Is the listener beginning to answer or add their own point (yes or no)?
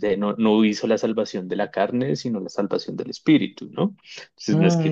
yes